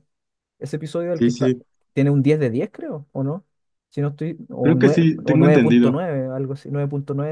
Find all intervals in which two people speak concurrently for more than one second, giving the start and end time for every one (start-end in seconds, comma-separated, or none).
4.6-6.0